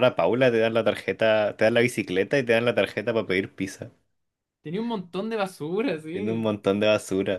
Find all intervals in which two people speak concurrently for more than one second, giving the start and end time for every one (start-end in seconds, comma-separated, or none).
none